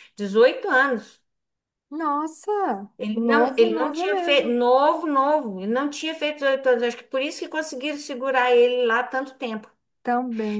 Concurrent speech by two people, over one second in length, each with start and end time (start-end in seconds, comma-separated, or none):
3.0-4.6